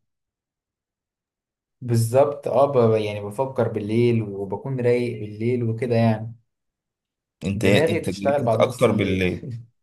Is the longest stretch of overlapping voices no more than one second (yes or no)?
no